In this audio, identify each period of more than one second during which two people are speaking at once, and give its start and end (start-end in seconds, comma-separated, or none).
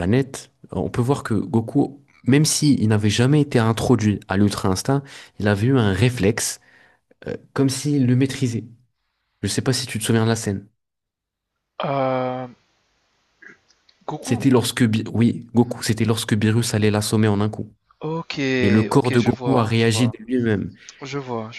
18.9-20.2